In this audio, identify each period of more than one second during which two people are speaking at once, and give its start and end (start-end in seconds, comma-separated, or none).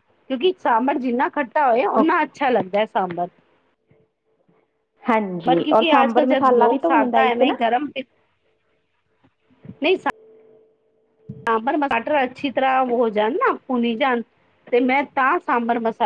5.5-7.5